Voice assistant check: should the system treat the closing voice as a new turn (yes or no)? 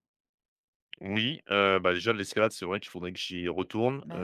no